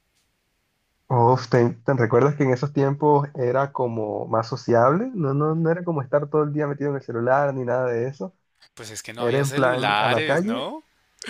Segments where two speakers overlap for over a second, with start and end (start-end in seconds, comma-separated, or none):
9.2-10.7